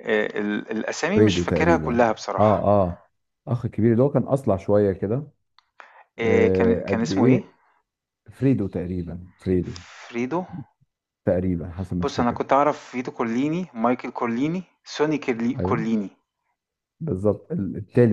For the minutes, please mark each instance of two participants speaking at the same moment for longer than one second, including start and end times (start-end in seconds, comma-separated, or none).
1.1-2.7, 6.2-7.4